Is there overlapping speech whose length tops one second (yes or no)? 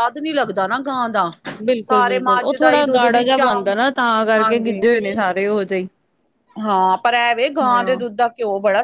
yes